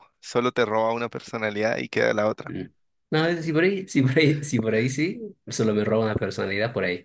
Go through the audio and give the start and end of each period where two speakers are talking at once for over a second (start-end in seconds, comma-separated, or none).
none